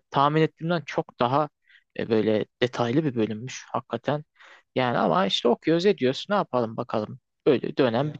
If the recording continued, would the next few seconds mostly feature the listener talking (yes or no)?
no